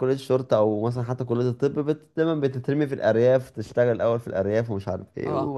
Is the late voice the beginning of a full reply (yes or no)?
no